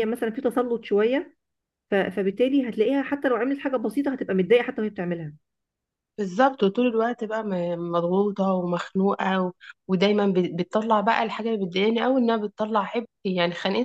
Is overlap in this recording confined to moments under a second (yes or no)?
yes